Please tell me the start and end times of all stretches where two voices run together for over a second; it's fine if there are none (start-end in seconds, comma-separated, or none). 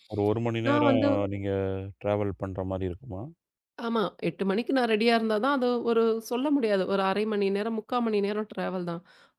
none